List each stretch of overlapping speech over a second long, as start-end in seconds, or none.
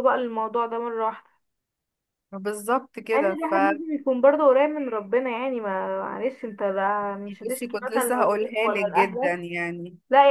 7.5-9.4